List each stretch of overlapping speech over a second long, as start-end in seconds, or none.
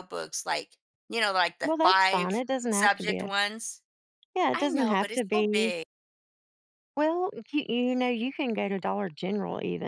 1.6-3.3, 4.5-5.7